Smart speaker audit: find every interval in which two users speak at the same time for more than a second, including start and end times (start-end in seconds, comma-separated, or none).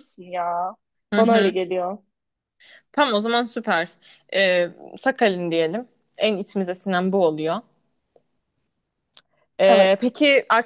none